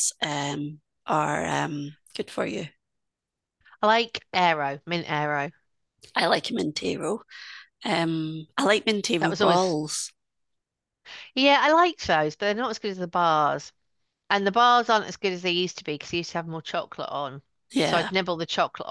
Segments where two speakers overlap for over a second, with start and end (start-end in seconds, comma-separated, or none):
none